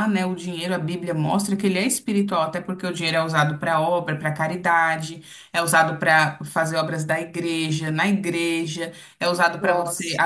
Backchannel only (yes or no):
yes